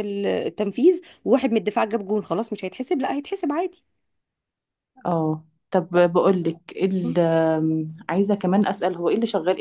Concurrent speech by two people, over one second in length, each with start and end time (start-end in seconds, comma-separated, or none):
none